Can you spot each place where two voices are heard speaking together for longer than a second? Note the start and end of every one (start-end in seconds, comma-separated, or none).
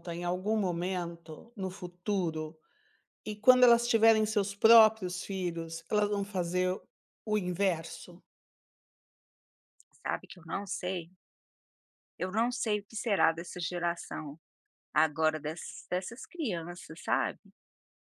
none